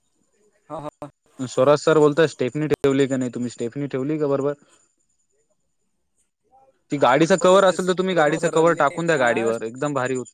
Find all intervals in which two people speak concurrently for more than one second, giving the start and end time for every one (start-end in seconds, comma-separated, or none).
7.0-9.5